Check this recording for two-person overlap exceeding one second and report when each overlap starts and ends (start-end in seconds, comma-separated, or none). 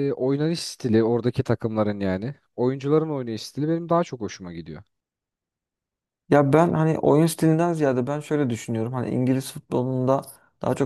none